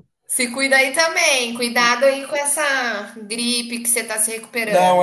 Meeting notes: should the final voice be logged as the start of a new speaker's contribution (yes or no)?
yes